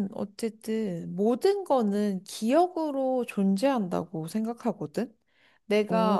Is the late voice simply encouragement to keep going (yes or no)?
yes